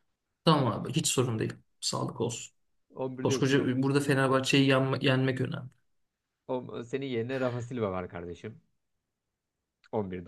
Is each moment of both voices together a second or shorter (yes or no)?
yes